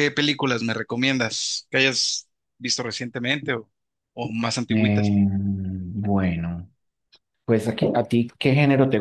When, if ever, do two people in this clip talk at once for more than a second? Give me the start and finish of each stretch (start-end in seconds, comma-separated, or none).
none